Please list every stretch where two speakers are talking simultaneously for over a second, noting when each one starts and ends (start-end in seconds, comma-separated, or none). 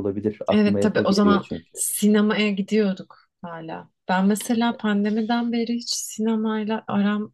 0.5-1.8